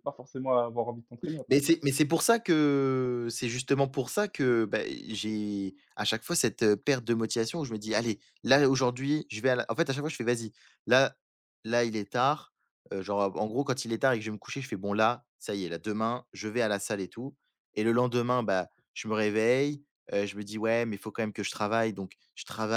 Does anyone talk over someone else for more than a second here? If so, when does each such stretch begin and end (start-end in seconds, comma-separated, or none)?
none